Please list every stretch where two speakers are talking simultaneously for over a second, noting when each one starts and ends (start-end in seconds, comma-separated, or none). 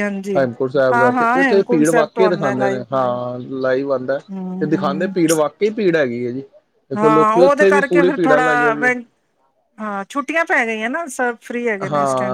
0.9-2.8, 7.0-8.4